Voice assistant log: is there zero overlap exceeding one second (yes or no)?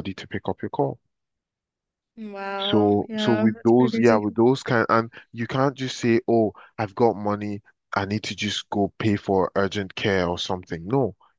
no